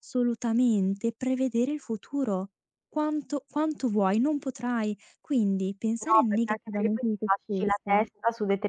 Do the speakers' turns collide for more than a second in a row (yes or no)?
yes